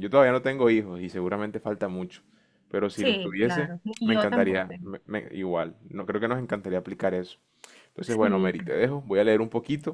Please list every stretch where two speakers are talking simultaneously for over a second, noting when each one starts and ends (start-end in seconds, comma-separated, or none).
2.9-4.9